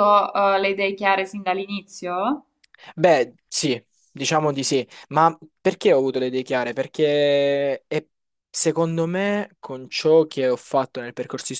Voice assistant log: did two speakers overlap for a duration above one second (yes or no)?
no